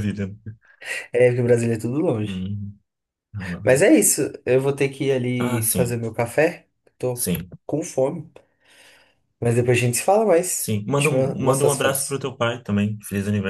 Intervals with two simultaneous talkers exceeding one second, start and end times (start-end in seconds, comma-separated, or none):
10.5-12.2